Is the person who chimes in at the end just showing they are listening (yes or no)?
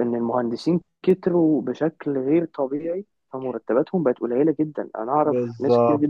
yes